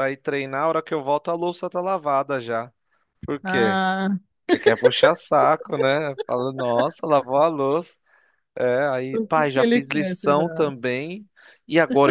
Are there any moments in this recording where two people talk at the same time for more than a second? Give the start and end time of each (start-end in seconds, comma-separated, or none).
9.1-10.7